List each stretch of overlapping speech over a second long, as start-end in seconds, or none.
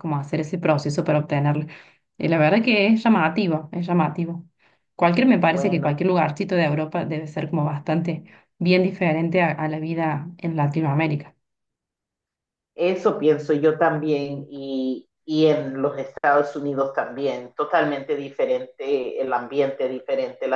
none